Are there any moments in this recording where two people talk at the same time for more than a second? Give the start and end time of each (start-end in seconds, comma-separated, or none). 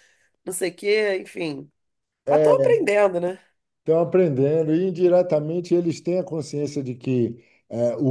none